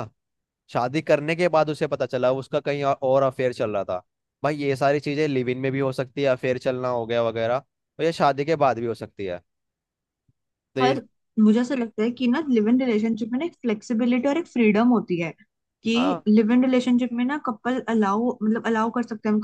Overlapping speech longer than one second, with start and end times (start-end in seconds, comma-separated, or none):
none